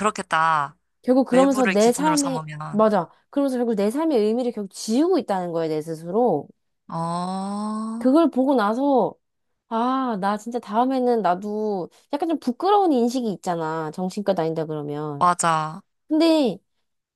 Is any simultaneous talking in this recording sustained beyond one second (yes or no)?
yes